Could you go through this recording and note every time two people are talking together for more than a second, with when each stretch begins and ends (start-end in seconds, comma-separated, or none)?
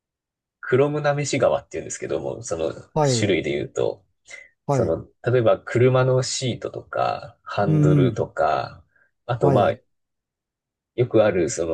none